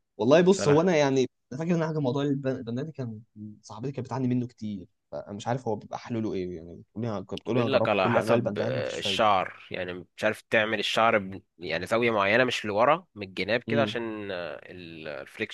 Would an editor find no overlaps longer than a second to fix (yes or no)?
no